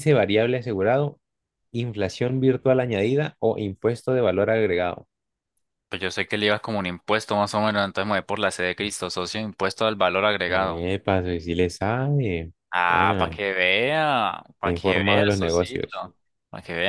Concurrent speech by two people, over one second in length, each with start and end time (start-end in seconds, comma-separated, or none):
14.6-15.9